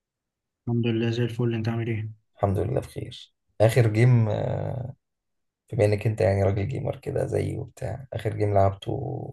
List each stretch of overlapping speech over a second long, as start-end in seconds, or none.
none